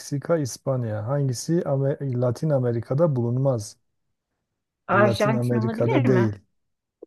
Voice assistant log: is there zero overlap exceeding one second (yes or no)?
no